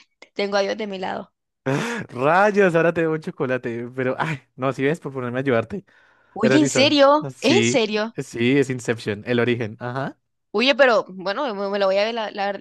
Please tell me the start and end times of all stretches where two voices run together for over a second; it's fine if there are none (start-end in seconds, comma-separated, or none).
6.4-8.2